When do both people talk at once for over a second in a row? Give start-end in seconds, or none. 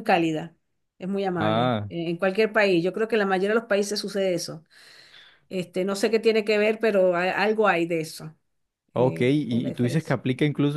9.0-10.2